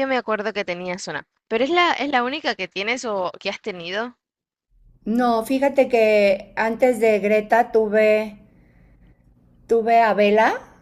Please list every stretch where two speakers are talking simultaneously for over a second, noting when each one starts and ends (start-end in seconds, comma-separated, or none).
none